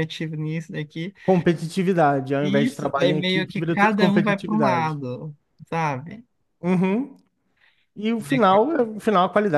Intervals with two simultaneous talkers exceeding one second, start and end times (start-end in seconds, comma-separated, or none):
2.4-5.0